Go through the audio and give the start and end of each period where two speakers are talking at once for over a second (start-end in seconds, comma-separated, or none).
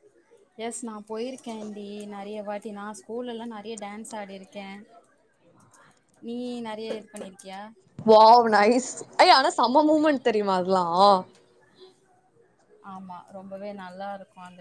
none